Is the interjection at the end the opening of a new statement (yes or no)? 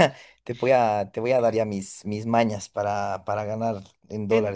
yes